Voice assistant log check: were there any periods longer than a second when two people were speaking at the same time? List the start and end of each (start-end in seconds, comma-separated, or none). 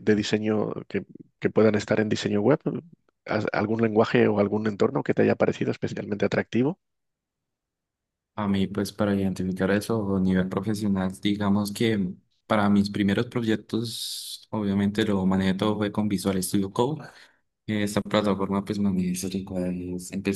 none